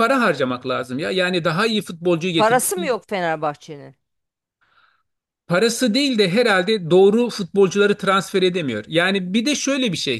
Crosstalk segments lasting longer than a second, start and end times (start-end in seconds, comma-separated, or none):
none